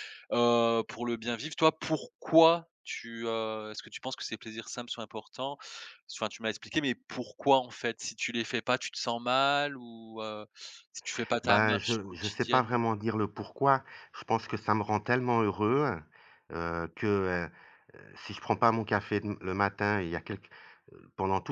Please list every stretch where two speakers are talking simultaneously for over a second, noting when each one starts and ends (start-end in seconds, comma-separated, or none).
11.4-12.7